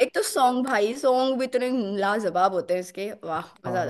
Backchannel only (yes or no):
no